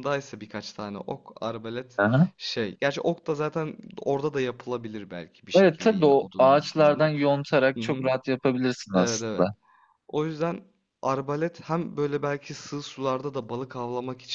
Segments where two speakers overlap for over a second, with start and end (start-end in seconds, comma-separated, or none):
5.5-7.1